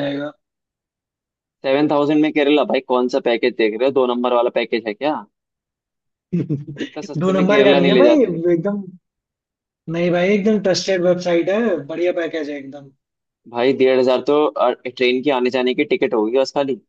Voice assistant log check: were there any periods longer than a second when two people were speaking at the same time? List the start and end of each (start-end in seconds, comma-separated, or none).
6.8-8.3